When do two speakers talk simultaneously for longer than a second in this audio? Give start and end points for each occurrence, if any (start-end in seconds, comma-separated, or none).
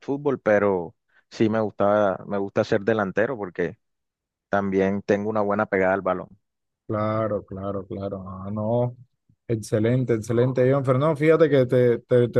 none